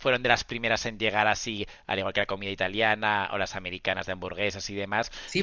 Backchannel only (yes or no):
no